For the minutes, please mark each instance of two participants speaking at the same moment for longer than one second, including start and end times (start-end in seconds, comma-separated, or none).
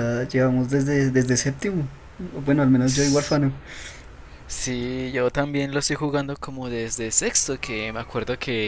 none